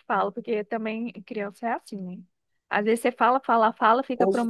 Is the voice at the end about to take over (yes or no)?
no